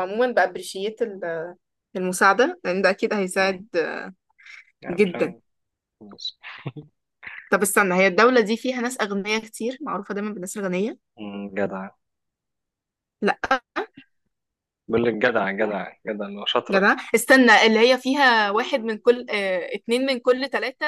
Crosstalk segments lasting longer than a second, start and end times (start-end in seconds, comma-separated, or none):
none